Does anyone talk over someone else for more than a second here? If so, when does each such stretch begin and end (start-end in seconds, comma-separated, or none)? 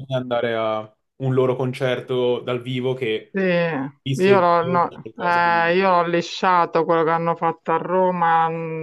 4.0-5.7